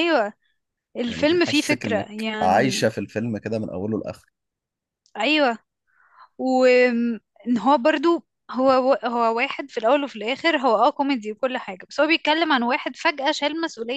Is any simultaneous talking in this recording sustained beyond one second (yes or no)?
yes